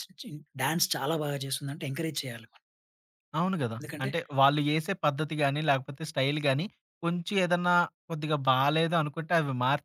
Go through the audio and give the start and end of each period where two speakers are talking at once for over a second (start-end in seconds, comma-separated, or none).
none